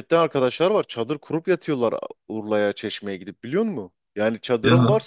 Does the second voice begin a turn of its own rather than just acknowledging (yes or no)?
no